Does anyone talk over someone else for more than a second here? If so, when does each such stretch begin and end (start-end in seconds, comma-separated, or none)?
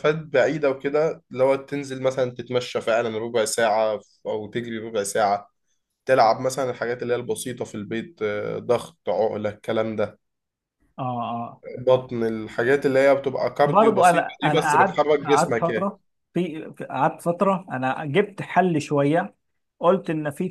13.6-15.9